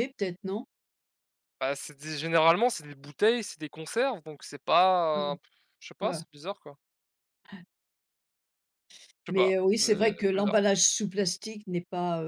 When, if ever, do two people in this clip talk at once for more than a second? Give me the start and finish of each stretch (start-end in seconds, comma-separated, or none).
9.3-10.6